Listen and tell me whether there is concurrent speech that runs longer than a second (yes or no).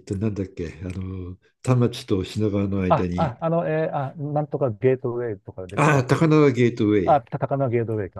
no